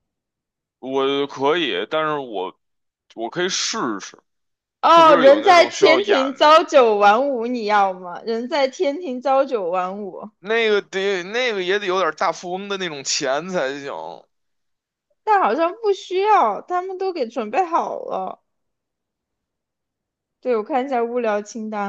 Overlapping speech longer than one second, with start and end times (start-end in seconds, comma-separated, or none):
4.9-6.6